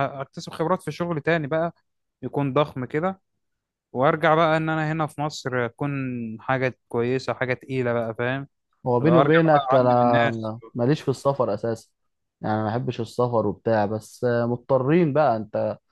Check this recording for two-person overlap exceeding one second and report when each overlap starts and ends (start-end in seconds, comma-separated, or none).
9.0-10.5